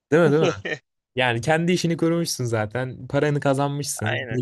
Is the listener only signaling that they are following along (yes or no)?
yes